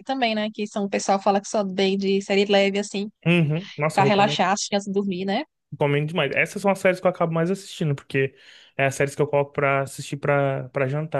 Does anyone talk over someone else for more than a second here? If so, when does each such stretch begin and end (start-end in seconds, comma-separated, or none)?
none